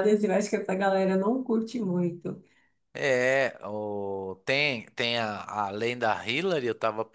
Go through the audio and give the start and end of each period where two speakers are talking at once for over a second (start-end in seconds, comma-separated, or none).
none